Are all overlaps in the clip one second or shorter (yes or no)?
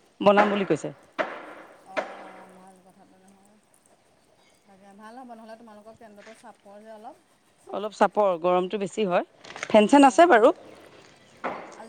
yes